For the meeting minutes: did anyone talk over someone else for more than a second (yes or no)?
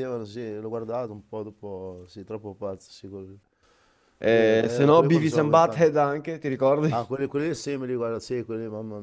yes